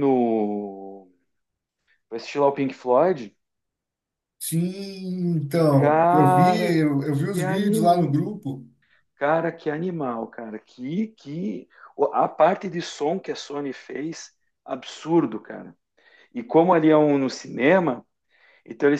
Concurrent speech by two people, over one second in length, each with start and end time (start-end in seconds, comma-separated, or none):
5.7-8.3